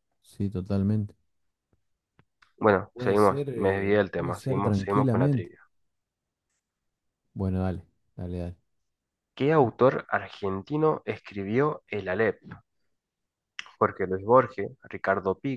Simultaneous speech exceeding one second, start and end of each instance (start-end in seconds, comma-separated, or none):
2.9-5.5